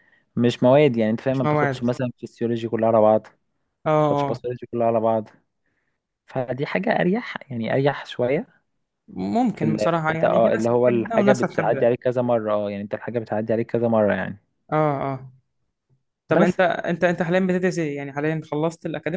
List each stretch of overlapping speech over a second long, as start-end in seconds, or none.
9.5-11.9